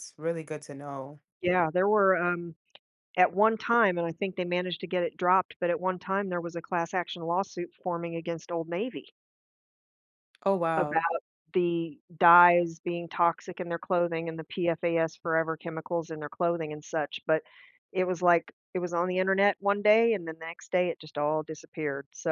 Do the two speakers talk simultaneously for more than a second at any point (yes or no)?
no